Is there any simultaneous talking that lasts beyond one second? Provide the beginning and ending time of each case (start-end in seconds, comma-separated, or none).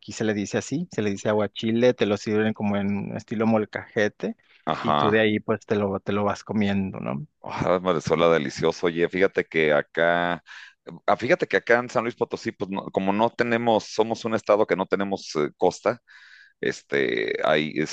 none